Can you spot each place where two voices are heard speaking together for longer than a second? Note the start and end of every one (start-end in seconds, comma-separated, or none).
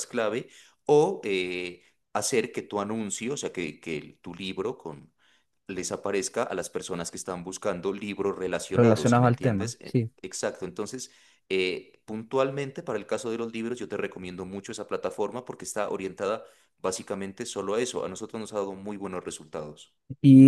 8.7-10.1